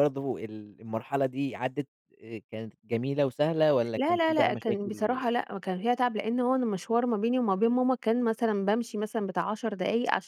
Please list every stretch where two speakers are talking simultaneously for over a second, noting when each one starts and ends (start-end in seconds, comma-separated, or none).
4.0-5.3